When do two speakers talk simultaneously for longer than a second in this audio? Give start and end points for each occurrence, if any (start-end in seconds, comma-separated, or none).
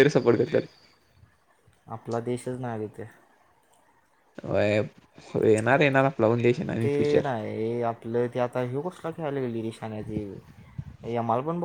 none